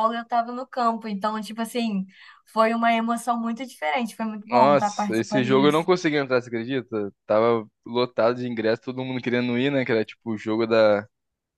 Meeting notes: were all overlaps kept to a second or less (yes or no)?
no